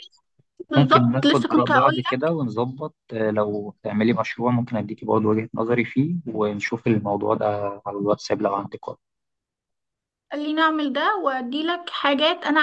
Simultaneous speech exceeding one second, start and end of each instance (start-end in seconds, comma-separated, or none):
0.8-2.4